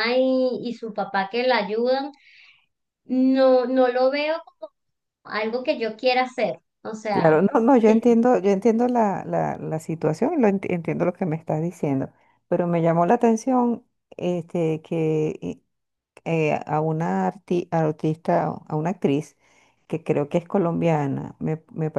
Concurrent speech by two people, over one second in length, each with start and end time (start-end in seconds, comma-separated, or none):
none